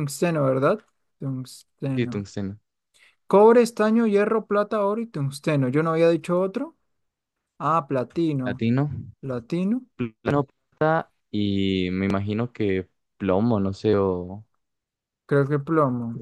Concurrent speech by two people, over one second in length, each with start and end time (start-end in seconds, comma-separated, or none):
none